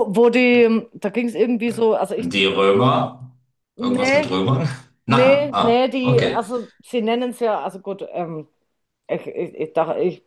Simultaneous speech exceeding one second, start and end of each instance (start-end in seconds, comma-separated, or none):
5.1-6.4